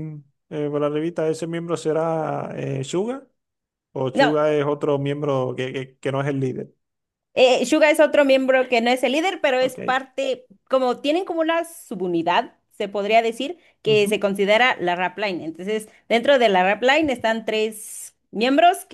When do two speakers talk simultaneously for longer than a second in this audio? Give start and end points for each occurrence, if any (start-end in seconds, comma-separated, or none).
none